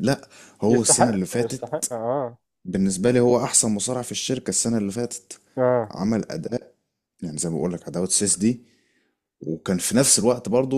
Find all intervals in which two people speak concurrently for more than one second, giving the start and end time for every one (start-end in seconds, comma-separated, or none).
0.7-1.9